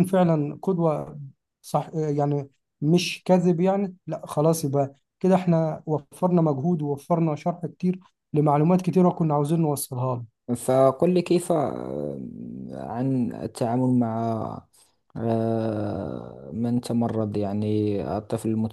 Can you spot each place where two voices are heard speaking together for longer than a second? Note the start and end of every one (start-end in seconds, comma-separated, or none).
none